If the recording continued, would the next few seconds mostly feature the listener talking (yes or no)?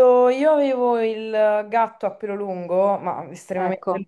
no